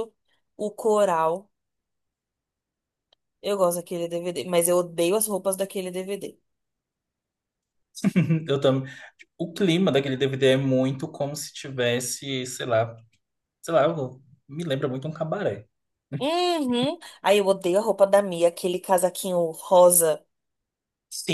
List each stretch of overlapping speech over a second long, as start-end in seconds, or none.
none